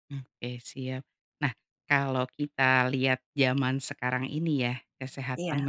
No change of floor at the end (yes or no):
yes